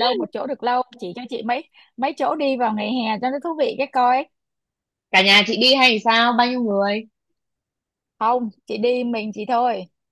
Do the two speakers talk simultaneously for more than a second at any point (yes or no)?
no